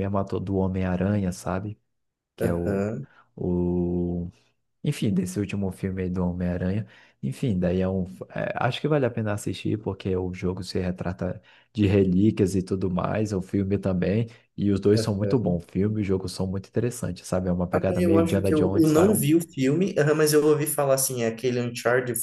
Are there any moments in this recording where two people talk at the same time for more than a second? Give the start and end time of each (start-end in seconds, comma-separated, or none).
17.7-19.2